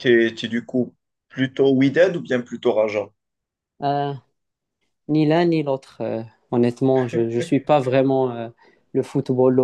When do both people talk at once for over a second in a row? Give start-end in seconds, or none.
none